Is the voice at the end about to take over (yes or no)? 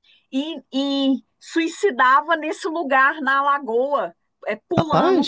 no